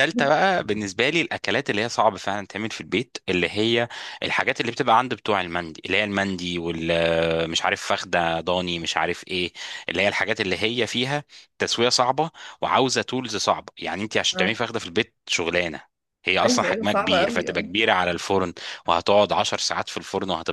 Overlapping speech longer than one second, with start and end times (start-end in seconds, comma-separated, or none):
16.4-17.7